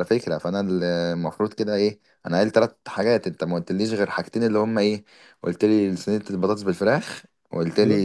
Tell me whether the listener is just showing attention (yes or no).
yes